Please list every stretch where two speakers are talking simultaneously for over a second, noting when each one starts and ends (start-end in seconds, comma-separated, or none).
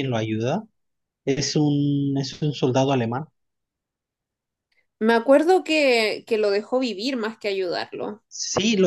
none